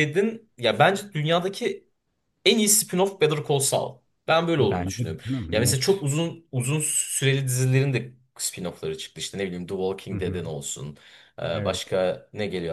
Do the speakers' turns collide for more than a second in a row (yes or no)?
yes